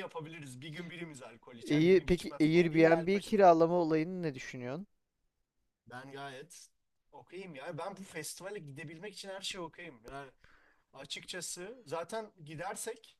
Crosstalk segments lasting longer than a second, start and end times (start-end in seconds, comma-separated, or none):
1.7-3.2